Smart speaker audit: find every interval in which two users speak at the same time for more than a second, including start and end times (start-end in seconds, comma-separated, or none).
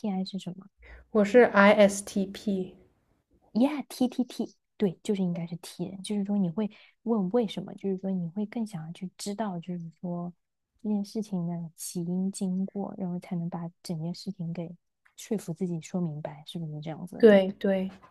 none